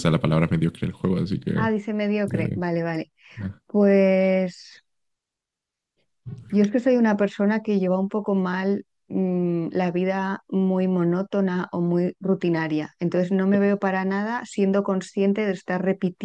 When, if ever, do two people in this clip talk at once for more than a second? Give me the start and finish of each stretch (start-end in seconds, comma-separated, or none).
none